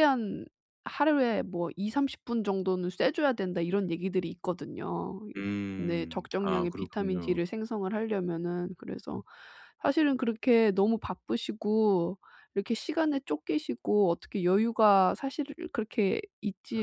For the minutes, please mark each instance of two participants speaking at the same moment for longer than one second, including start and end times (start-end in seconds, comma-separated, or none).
5.8-7.4